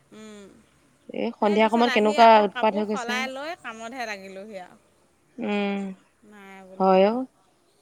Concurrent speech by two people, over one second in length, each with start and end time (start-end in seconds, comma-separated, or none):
1.4-3.2